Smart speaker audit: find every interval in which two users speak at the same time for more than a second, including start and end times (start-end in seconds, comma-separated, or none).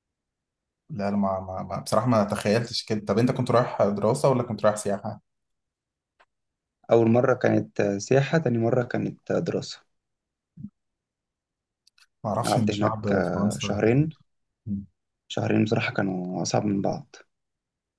12.5-14.0